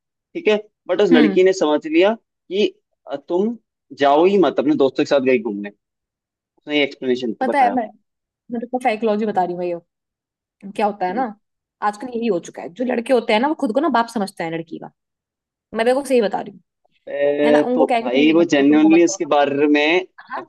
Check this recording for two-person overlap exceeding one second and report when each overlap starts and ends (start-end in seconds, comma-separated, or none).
17.4-19.4